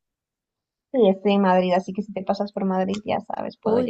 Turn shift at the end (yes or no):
yes